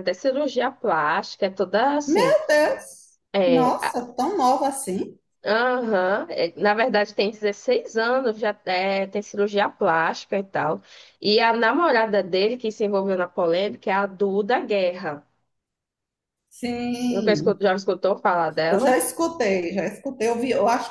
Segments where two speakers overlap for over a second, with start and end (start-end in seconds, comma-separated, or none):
none